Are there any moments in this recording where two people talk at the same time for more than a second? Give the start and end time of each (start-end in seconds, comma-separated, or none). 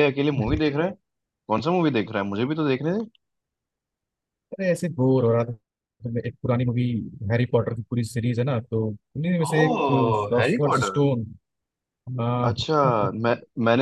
9.6-11.0